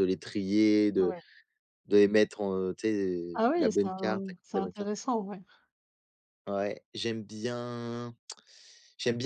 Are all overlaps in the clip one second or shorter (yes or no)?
no